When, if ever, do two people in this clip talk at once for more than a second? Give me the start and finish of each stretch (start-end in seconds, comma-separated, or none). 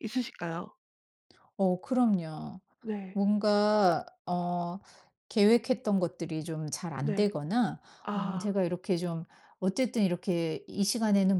none